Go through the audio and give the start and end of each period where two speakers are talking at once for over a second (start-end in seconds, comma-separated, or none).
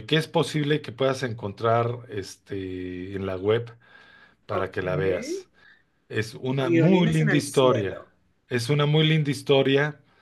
6.6-8.0